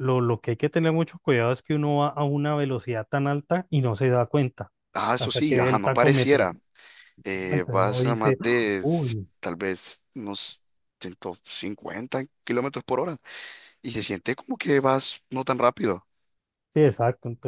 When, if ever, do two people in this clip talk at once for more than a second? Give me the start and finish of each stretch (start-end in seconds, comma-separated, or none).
5.2-6.5, 7.3-9.3